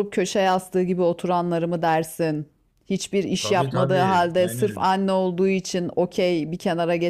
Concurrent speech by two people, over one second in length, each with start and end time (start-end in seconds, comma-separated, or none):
3.4-4.9